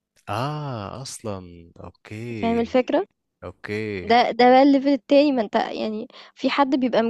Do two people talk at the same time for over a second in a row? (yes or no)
no